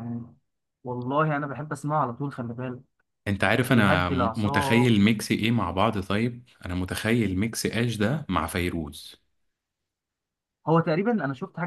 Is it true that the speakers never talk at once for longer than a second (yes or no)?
no